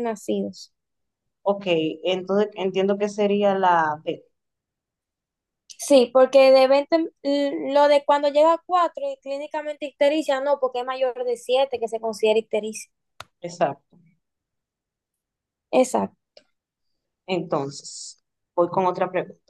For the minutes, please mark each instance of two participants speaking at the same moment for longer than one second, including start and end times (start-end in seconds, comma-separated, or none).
none